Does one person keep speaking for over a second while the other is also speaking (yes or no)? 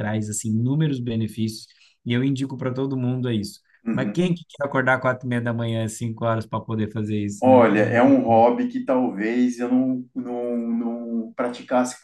no